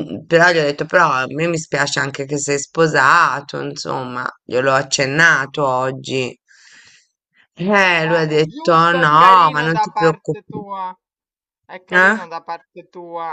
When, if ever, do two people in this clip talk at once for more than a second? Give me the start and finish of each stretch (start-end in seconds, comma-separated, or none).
8.0-10.6